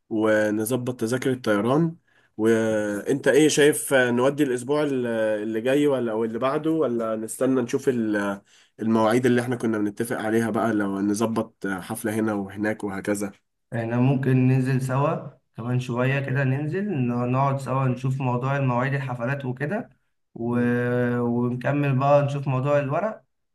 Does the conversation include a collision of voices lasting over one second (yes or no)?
no